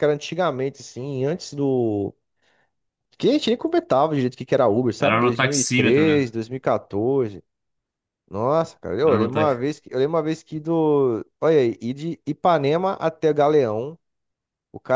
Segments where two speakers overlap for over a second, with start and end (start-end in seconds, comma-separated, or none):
5.0-6.2